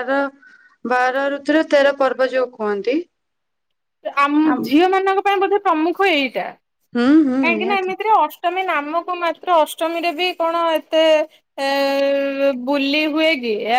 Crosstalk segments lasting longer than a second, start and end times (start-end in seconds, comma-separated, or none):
none